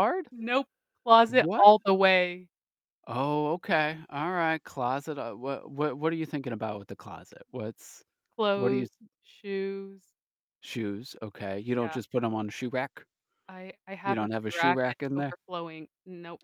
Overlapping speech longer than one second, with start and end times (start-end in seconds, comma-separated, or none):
14.1-15.3